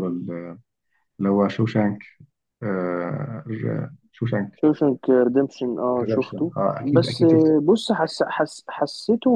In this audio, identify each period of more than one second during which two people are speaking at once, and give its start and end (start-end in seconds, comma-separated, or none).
6.0-7.5